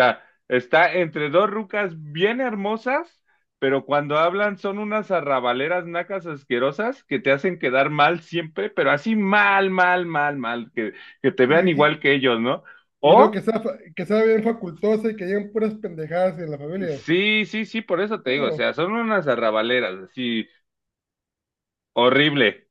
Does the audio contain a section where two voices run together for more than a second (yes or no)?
no